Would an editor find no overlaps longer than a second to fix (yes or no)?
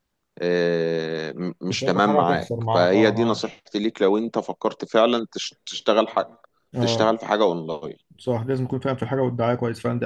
no